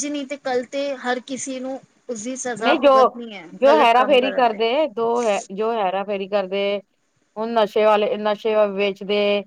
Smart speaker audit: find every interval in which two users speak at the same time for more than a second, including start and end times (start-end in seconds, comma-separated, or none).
2.6-4.6